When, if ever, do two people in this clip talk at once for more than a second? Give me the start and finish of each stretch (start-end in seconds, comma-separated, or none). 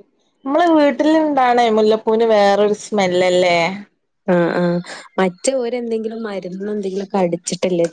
none